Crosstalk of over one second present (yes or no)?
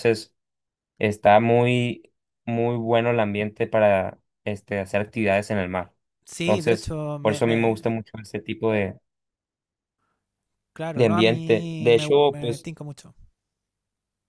yes